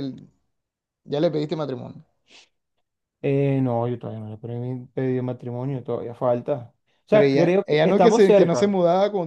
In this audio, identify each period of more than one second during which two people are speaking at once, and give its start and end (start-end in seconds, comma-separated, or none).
7.1-8.8